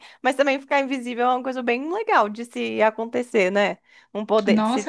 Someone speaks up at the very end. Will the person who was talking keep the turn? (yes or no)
no